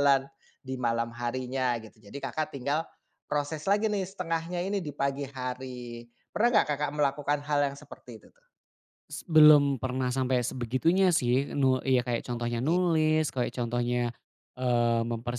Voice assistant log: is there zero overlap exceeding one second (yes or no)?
yes